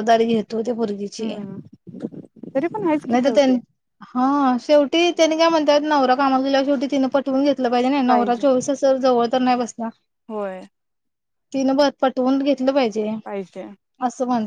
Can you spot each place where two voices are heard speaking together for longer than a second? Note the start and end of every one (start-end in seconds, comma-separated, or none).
none